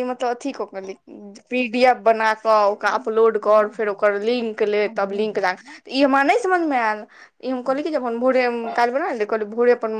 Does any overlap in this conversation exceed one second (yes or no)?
yes